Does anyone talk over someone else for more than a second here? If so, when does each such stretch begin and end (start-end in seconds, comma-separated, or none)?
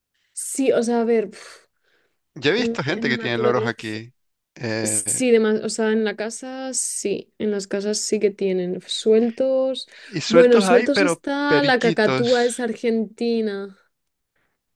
2.5-4.0, 10.3-12.5